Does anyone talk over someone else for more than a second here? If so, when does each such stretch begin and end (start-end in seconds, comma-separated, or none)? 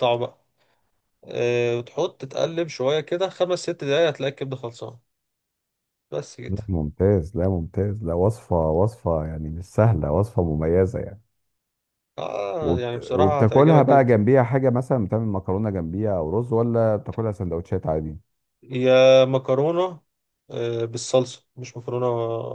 12.6-14.1